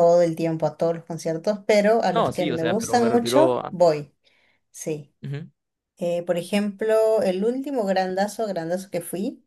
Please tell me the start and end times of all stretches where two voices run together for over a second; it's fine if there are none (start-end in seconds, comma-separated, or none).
2.1-3.8